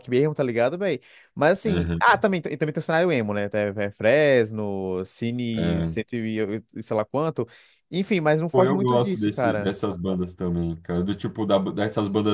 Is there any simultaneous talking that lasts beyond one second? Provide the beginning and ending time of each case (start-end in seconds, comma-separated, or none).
8.5-9.7